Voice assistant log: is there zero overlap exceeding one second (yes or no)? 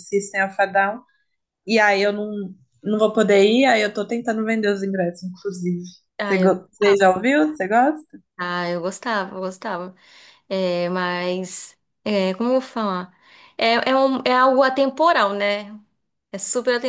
yes